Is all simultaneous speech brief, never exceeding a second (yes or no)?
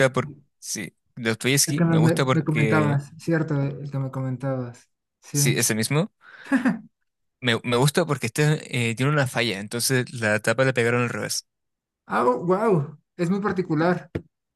no